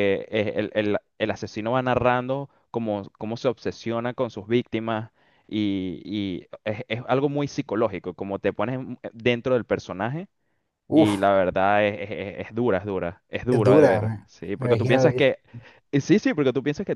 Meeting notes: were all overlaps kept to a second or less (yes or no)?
no